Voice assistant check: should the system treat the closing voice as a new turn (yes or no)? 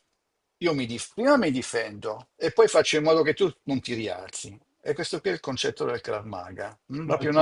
no